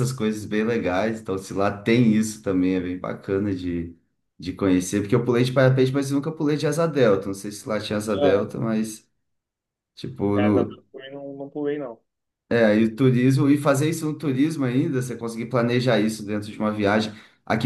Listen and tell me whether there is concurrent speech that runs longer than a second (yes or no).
no